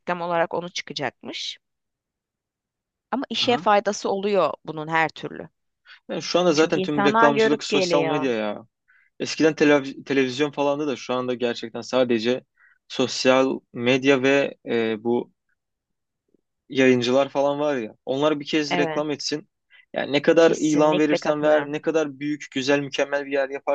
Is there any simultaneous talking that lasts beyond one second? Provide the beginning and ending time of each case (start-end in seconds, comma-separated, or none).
6.5-8.3, 20.4-21.8